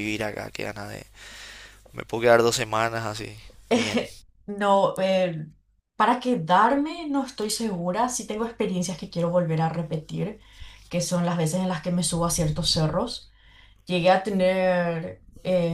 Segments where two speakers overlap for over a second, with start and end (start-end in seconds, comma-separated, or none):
none